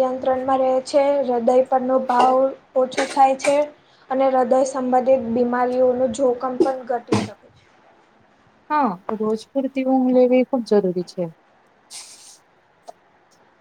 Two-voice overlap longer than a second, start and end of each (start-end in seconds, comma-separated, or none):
none